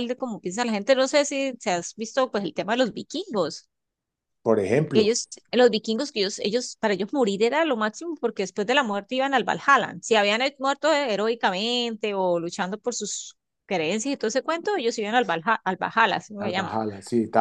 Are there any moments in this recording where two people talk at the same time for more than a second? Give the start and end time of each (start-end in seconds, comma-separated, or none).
none